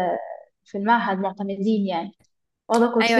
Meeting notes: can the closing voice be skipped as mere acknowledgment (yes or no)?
no